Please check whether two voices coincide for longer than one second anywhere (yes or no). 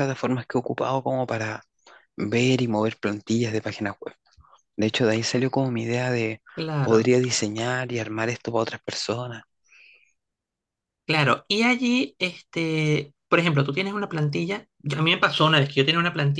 no